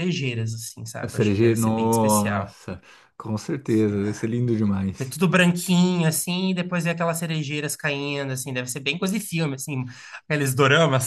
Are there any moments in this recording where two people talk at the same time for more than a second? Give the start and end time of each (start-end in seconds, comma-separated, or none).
1.0-2.5